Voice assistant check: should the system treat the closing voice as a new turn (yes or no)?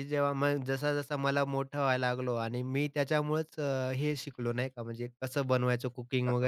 no